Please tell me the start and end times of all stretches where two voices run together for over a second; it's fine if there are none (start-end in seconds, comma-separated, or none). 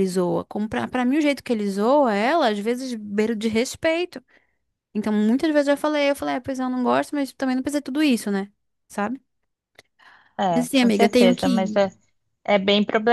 10.5-11.8